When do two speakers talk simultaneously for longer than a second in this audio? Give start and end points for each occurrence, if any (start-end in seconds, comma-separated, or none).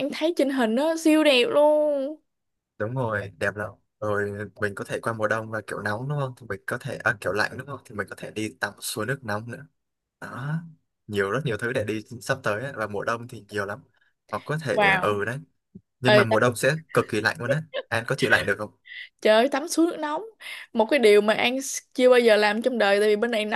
none